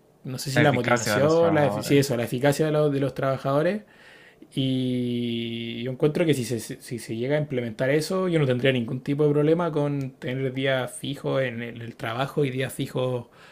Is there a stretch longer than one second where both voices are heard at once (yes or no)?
yes